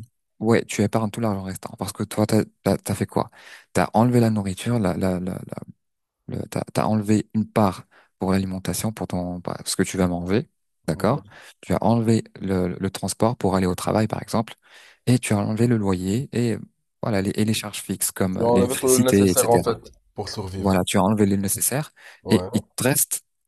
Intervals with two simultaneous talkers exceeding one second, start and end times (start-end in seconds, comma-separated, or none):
18.4-19.7